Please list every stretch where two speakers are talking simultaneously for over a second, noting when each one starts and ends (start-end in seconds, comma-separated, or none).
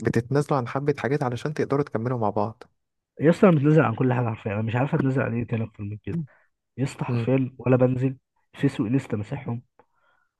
none